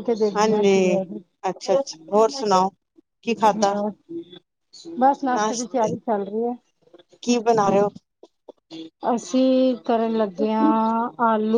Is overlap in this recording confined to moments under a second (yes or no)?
yes